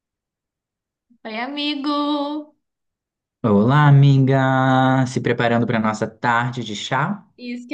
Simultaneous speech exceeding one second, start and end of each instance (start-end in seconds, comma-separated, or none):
none